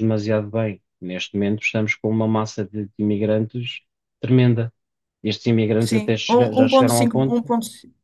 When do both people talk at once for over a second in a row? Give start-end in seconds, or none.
5.8-7.4